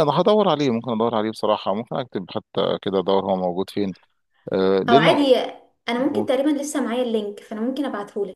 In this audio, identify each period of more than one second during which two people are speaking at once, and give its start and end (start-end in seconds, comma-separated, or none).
none